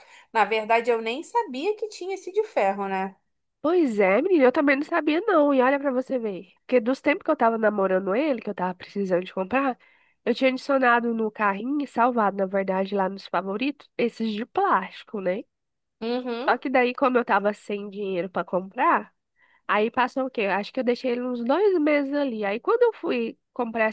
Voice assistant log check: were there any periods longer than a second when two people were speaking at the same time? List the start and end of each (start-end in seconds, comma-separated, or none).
none